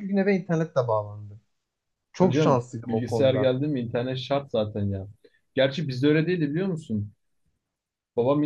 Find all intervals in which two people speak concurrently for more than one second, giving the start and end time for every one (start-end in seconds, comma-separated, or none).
2.2-3.5